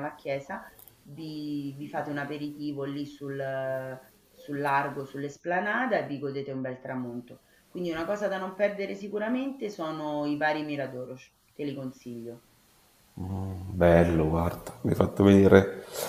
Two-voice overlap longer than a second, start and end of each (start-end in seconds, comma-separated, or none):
none